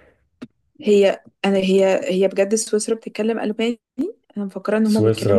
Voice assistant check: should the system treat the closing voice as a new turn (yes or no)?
yes